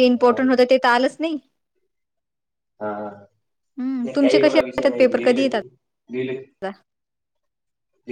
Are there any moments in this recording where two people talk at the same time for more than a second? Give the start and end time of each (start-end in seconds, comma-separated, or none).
3.8-5.8